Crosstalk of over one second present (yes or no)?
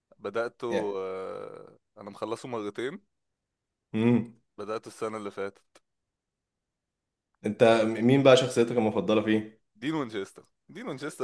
no